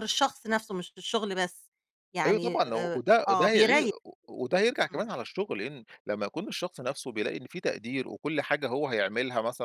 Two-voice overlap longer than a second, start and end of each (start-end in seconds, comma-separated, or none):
2.2-3.9